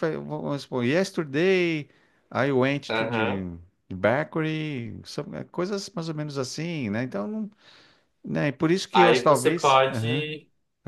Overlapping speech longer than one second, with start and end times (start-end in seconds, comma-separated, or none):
8.9-10.3